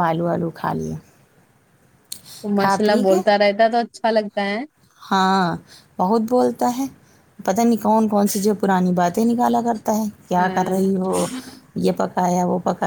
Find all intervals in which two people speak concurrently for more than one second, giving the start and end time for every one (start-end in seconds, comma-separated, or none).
none